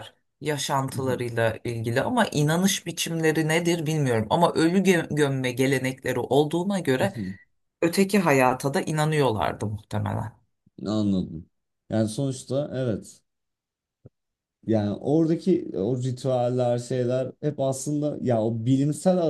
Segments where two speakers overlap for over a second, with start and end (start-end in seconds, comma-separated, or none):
none